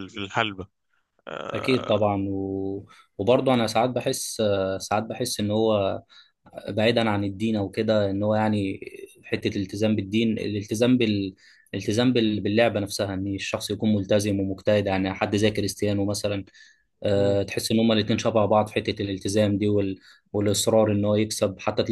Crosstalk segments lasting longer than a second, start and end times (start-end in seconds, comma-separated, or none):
none